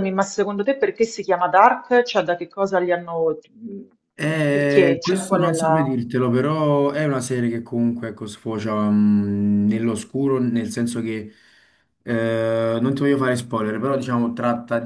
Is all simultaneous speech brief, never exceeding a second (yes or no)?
no